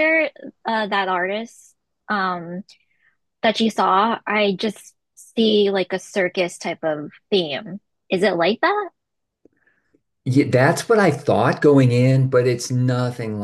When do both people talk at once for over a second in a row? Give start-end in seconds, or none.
none